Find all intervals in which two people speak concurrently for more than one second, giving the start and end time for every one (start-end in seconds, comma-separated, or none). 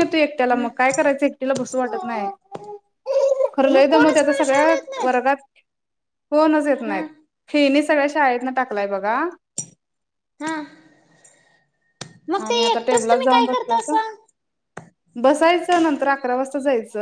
3.7-5.4